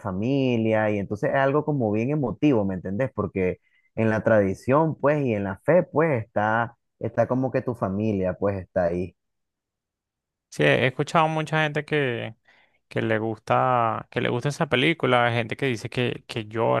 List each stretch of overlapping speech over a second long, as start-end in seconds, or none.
none